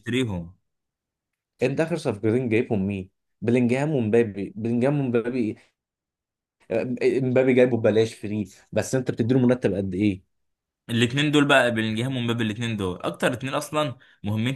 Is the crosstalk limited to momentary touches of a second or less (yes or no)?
yes